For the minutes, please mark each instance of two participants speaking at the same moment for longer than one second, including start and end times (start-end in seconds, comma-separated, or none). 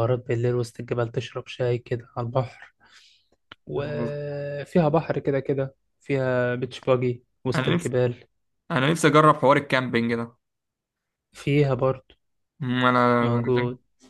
none